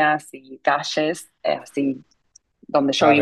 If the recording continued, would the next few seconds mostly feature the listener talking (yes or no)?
yes